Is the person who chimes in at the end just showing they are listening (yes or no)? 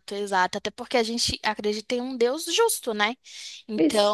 yes